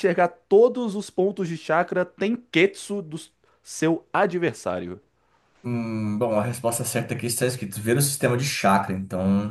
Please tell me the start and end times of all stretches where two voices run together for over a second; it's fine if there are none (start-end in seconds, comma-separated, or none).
none